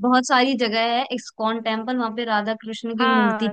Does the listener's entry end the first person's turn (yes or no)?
yes